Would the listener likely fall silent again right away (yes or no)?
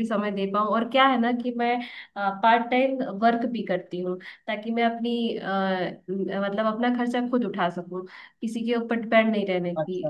yes